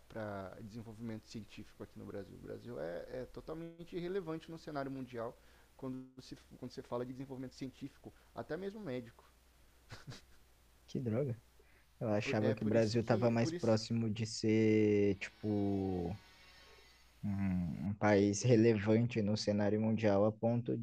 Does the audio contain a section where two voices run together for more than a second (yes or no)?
yes